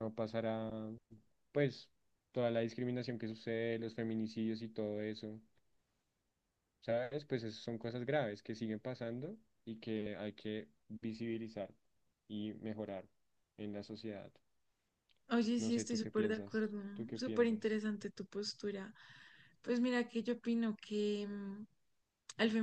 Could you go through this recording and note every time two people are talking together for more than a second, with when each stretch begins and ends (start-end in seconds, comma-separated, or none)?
15.6-17.8